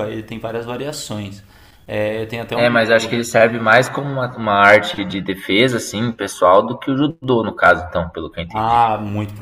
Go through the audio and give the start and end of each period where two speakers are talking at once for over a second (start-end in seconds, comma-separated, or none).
none